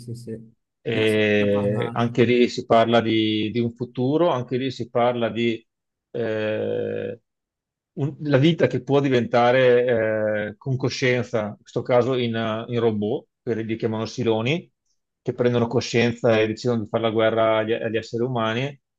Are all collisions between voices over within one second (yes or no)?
no